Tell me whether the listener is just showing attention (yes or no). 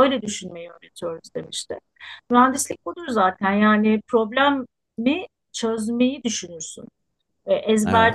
yes